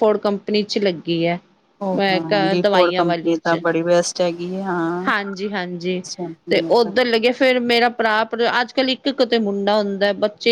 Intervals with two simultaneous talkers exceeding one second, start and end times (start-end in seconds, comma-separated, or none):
2.0-3.6